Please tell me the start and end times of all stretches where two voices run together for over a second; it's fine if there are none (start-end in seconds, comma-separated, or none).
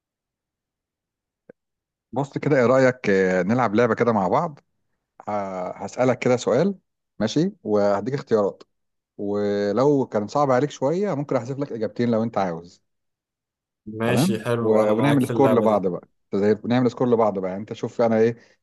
14.0-15.8